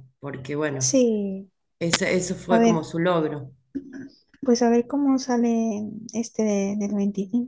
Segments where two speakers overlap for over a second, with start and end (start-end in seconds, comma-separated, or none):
none